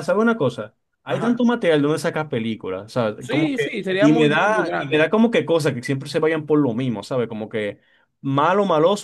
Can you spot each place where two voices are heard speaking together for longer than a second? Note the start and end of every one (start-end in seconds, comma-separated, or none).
3.2-5.1